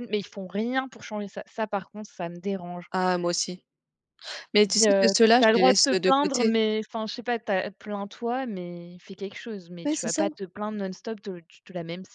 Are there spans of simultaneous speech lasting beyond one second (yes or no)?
yes